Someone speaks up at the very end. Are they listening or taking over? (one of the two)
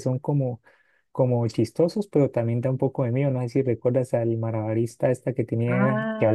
taking over